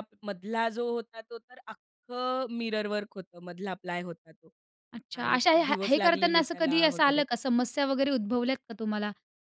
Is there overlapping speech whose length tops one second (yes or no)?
yes